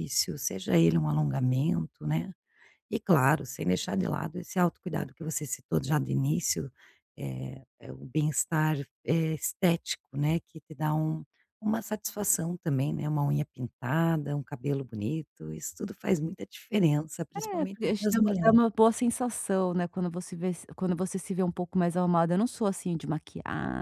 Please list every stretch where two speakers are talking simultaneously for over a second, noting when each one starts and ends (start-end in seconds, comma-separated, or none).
17.3-18.6